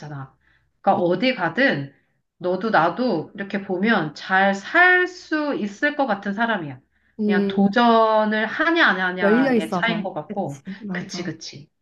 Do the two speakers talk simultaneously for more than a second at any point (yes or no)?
yes